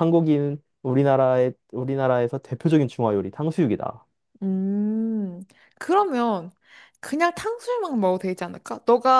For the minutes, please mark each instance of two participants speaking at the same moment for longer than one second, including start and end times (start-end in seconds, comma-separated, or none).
none